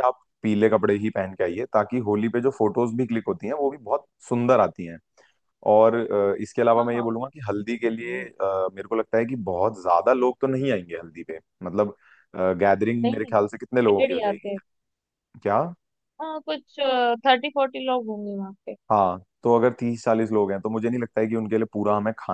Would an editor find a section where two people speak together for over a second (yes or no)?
yes